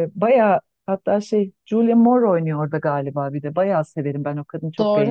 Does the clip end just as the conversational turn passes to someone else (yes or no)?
yes